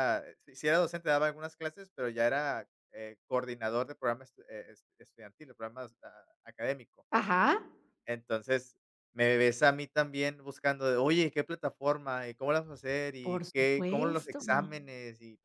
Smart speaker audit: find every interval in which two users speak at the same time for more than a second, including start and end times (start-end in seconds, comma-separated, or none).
13.2-14.4